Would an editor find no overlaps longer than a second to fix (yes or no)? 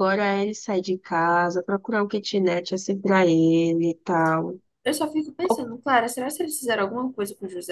yes